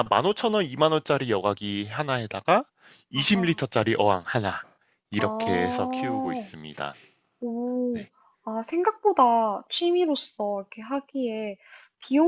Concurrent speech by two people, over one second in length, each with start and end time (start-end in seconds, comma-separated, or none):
5.2-6.5